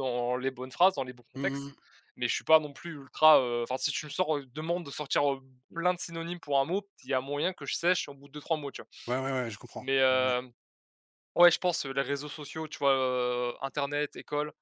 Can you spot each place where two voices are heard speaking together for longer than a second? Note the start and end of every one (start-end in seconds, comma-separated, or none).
none